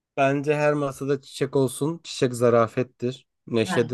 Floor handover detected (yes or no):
no